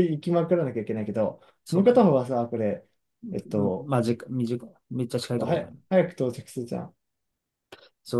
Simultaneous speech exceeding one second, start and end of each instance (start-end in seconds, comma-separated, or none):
none